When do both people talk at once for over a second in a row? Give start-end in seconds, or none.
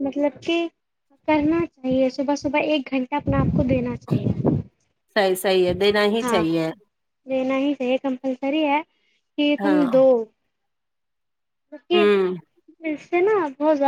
none